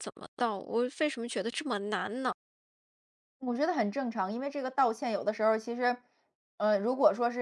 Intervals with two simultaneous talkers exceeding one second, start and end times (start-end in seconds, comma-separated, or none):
none